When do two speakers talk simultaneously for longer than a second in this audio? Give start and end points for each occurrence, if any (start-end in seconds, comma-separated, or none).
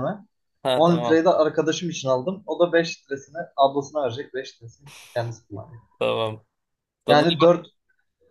none